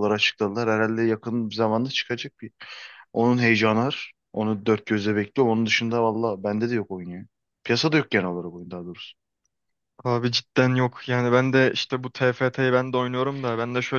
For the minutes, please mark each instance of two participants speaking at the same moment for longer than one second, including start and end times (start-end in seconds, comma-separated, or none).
none